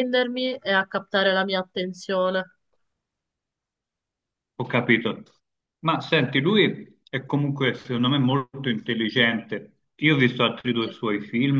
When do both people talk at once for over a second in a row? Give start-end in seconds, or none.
none